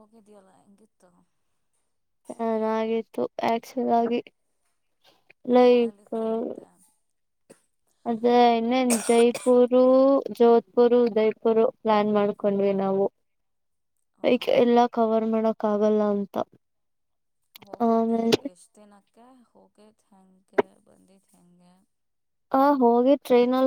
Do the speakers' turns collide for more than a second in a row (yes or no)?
no